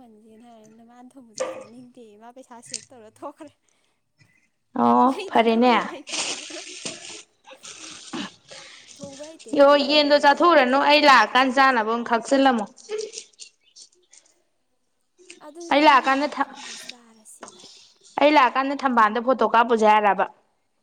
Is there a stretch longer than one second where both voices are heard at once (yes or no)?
yes